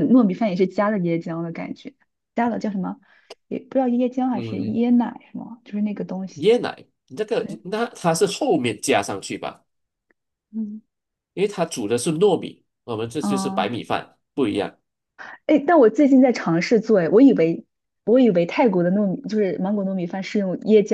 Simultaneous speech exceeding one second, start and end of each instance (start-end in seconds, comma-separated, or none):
none